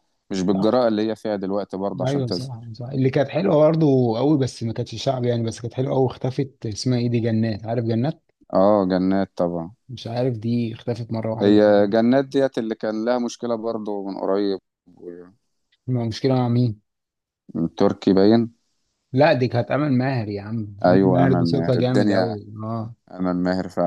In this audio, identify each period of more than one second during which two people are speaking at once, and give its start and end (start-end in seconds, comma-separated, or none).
20.8-22.4